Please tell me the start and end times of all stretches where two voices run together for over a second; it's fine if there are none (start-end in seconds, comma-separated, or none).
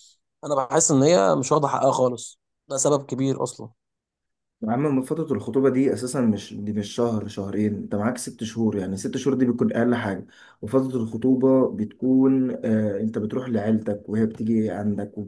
none